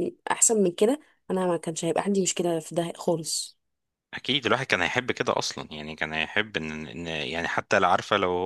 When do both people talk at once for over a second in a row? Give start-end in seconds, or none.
none